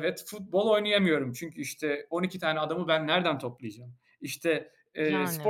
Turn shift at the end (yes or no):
no